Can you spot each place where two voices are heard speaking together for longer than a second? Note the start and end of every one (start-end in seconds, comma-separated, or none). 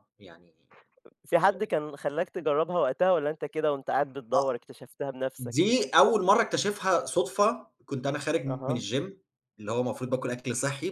none